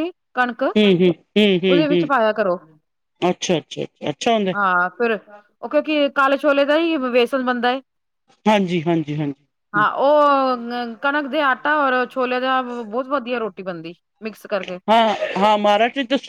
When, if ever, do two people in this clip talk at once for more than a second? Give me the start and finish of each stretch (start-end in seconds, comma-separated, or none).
0.8-2.1